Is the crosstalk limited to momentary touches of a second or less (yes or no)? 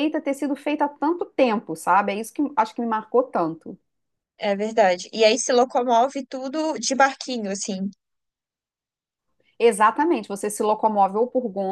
yes